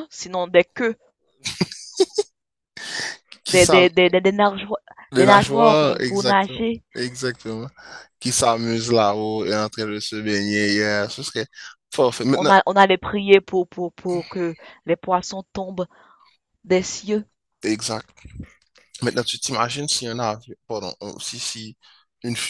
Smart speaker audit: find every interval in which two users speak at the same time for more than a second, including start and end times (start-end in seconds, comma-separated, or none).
5.2-6.8